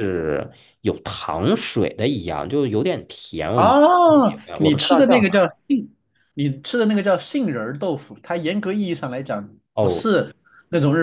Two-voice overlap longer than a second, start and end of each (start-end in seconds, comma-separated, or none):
3.5-5.6